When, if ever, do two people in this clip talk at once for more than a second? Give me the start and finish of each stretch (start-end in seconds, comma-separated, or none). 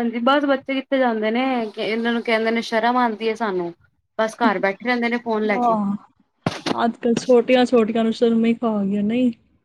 none